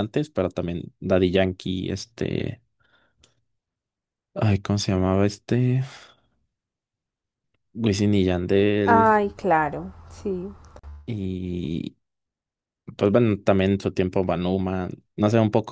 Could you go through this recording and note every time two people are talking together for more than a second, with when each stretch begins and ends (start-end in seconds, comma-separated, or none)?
none